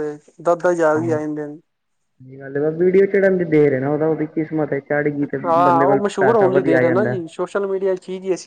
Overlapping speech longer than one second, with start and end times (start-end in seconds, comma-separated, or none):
5.5-7.2